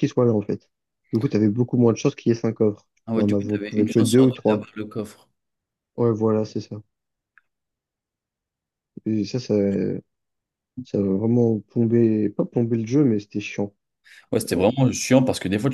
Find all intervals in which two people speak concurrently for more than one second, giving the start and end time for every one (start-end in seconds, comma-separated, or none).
3.1-4.7